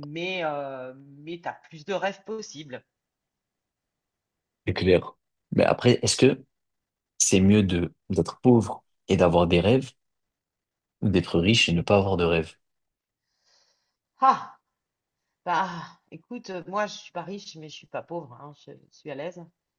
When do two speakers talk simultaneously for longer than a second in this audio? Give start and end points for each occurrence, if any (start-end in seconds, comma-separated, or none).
none